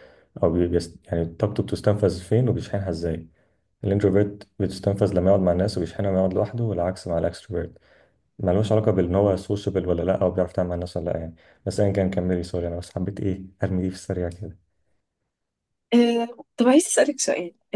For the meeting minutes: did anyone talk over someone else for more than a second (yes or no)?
no